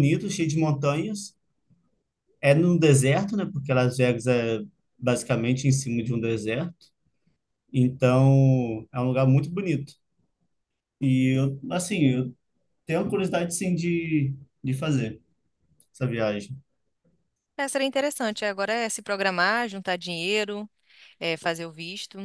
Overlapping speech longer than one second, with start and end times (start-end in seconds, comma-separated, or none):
none